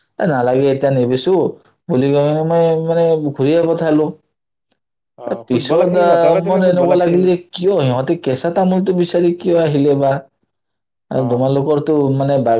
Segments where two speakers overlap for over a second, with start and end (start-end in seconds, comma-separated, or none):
5.2-7.2